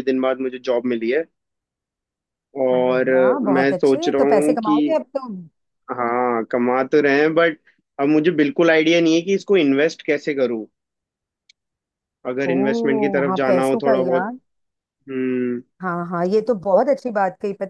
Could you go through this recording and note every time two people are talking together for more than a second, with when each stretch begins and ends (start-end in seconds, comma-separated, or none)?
2.7-4.8, 12.5-14.4